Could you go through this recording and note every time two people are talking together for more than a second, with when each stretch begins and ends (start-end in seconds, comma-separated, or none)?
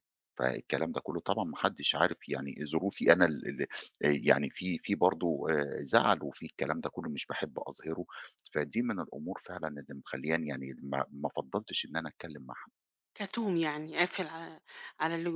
none